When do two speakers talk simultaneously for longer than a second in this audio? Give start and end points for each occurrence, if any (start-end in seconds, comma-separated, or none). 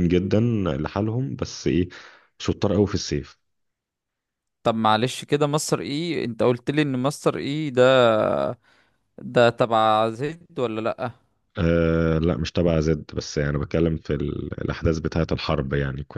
none